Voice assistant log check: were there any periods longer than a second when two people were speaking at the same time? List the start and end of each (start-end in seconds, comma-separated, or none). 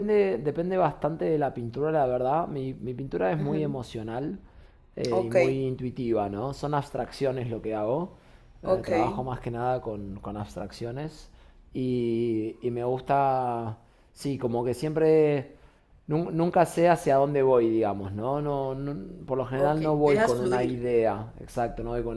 19.5-20.9